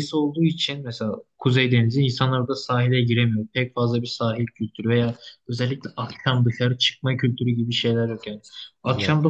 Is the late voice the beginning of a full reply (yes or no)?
no